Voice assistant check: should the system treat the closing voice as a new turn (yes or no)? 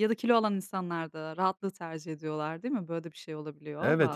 yes